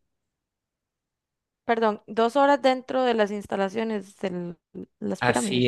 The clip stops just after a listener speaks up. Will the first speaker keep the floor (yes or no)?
no